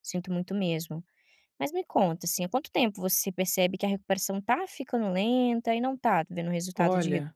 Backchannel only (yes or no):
no